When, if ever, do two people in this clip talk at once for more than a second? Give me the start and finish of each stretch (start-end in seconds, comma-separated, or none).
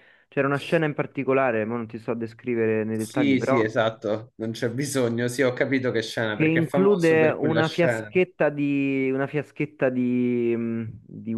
6.3-8.1